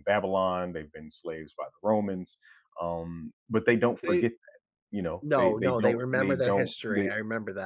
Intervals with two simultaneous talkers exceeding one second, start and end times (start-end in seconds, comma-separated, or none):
5.2-7.1